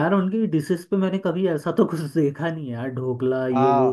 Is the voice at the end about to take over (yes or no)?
yes